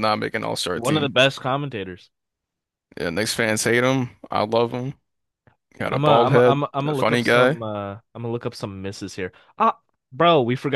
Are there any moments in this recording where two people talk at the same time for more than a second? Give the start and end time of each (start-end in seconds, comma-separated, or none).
5.9-7.6